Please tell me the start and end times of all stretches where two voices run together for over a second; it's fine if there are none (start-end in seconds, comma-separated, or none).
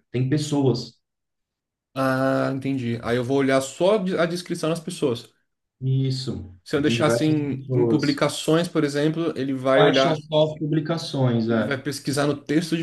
6.6-8.2